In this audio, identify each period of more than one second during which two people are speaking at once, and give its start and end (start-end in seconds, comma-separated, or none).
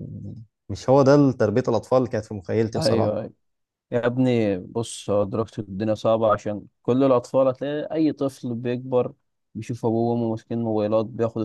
none